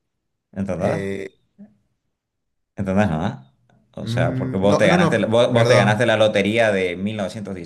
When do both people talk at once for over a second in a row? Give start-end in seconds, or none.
4.0-6.1